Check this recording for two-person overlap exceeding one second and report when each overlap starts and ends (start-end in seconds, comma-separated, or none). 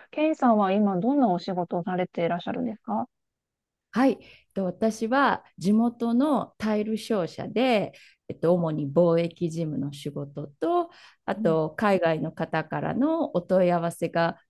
none